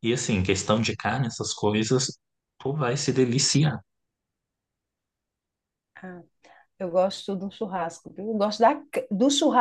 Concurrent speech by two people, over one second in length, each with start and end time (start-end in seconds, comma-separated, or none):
none